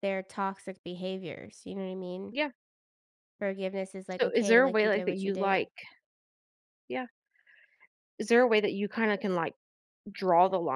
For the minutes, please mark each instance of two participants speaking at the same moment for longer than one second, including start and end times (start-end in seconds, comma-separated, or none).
4.2-5.6